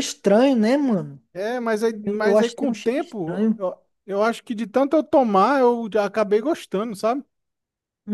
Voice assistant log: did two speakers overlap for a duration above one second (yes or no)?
yes